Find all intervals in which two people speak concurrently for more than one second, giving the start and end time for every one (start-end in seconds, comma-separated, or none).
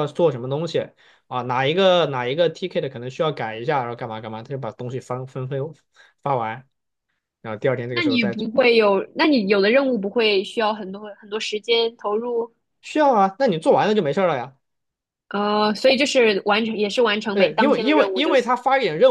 17.3-18.5